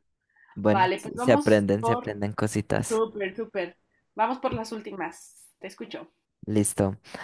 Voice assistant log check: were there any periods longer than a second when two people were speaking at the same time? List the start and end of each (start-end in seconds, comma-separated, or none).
0.7-2.2